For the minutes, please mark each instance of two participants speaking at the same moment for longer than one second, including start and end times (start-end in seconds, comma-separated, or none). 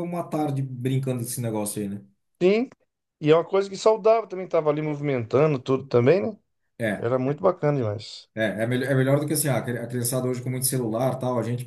none